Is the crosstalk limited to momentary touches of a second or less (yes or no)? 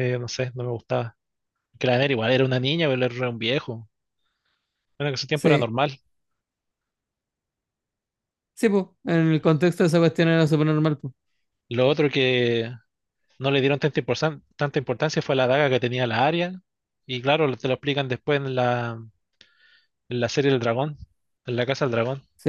yes